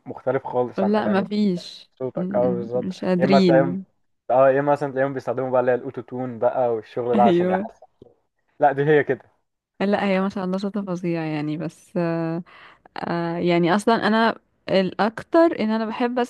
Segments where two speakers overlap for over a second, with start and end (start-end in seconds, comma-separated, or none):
2.0-3.8